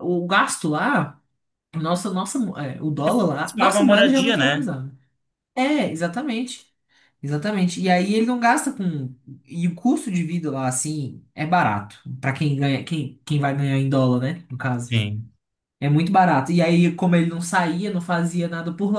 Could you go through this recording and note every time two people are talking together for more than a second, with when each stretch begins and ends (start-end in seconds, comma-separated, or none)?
3.5-4.7